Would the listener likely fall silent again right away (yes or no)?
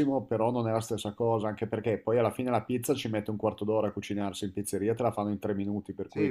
no